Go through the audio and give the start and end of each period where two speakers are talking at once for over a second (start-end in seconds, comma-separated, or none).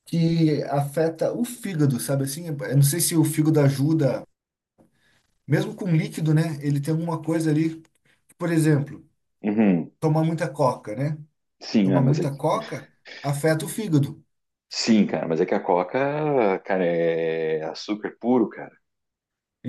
none